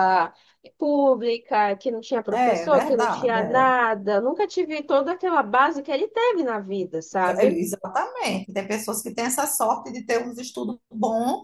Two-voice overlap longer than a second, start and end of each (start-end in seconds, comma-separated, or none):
2.3-3.7